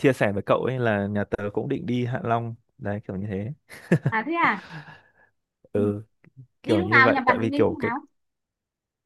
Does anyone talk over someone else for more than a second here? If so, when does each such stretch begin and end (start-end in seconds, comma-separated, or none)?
6.6-7.9